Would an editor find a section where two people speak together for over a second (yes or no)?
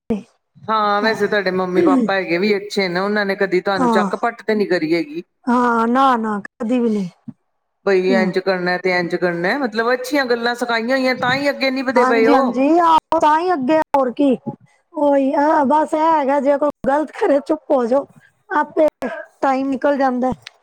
no